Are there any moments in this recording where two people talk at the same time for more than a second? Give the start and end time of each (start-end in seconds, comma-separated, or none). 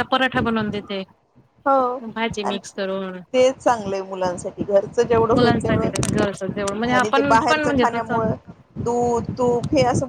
5.3-8.2